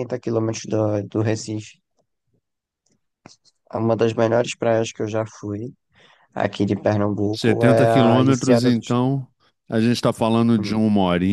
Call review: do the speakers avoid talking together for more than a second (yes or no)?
no